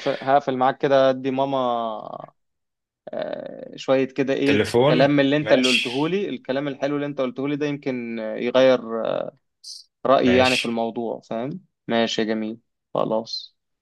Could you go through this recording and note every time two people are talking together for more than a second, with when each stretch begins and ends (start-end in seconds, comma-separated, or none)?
4.5-6.2